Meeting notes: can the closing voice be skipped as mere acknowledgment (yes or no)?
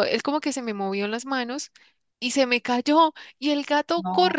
yes